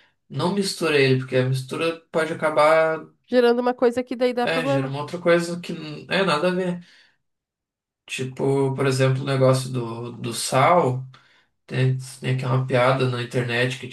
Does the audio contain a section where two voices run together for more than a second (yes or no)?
no